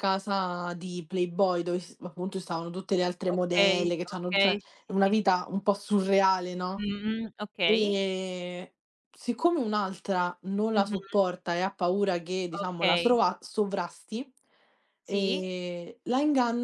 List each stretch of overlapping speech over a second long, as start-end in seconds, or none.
3.3-5.2